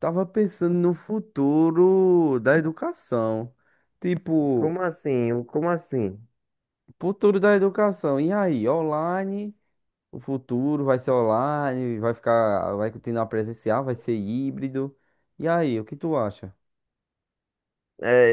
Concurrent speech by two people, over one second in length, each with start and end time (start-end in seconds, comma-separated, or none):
none